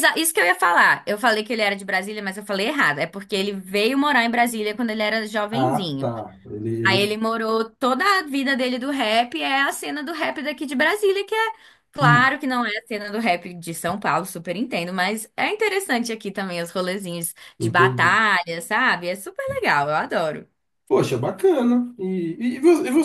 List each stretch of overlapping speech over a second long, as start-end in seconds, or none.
none